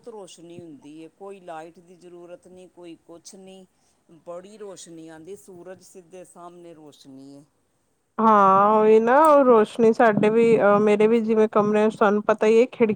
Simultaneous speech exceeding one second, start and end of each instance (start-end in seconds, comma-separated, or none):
none